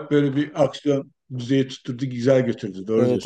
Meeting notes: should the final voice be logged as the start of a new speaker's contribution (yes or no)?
yes